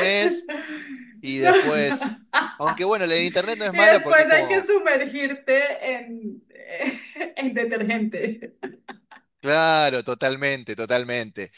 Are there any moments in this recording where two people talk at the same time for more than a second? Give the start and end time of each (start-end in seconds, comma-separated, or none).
3.2-4.7